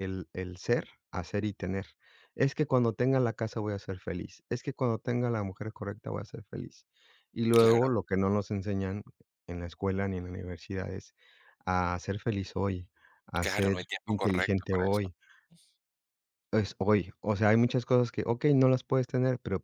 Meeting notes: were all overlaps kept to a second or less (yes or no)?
no